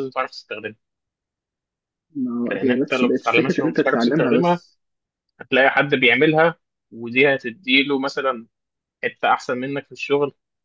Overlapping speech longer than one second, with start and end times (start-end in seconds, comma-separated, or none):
2.5-4.6